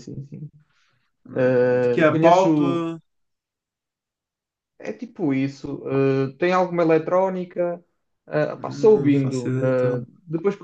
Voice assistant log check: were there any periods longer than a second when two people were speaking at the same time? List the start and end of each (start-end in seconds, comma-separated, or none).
1.3-2.9, 8.6-10.1